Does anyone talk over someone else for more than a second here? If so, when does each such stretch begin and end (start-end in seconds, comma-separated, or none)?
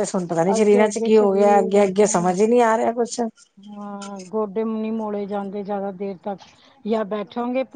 0.6-2.4